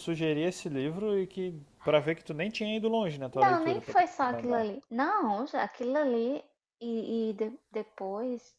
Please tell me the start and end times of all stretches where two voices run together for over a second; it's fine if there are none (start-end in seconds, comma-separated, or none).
3.4-4.7